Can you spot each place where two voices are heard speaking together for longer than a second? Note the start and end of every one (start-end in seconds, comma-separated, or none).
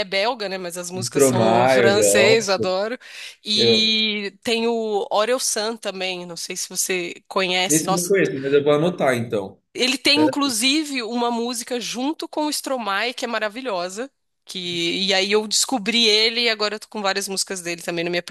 0.9-2.7